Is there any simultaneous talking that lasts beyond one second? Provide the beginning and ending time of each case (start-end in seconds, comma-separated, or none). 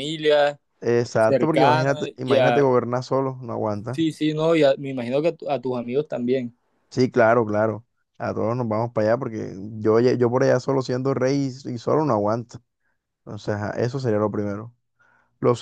1.2-2.7